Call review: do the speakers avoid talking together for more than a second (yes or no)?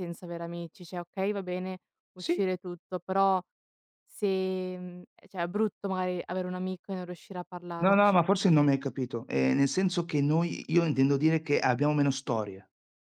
yes